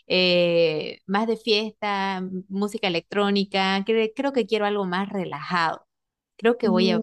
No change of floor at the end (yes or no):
yes